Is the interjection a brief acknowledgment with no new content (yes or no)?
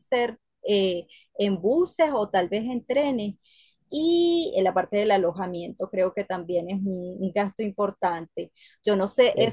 yes